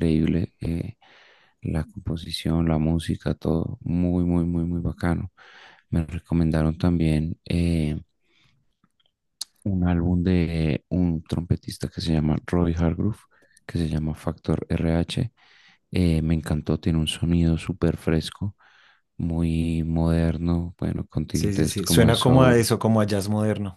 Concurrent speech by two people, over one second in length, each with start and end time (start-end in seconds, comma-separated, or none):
21.3-22.7